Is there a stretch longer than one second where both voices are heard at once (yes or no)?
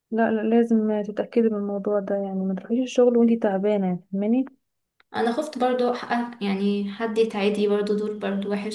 no